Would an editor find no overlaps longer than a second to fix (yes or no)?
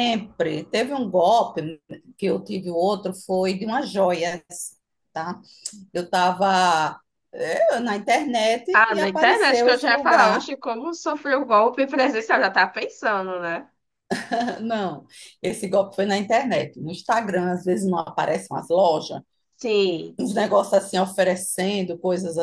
no